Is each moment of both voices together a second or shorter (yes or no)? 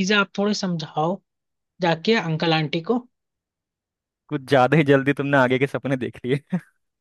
yes